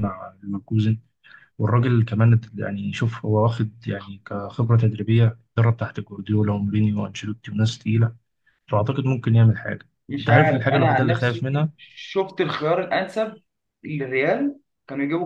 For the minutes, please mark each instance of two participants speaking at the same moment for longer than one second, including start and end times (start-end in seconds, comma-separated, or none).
10.1-11.4